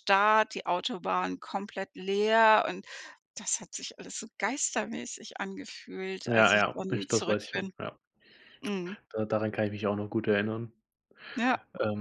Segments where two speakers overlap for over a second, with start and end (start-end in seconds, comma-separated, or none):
6.3-7.7